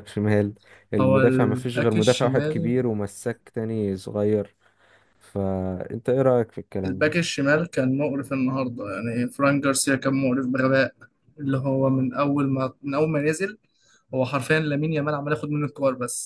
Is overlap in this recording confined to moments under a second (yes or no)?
no